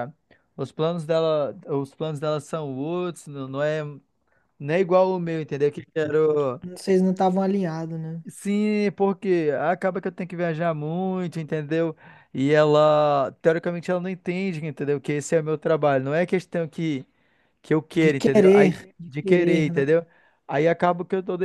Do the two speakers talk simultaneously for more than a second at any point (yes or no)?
yes